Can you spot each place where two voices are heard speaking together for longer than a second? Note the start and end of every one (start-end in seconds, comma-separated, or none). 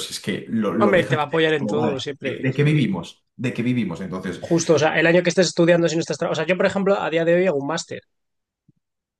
0.8-2.8